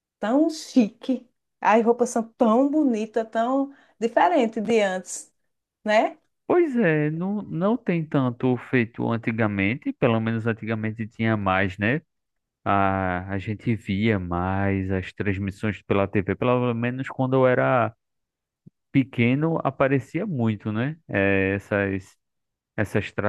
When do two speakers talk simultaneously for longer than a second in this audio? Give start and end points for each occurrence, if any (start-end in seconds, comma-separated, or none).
none